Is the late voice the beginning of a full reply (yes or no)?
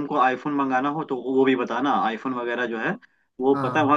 no